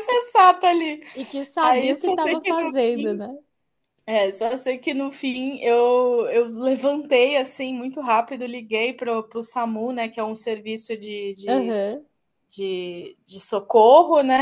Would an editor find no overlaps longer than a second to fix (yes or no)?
no